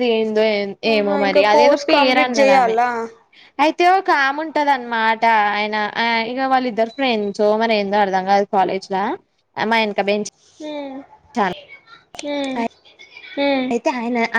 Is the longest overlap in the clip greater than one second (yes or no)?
yes